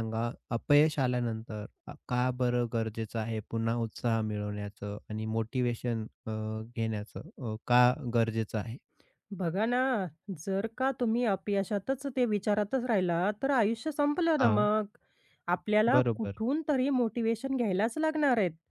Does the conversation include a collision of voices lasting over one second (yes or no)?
no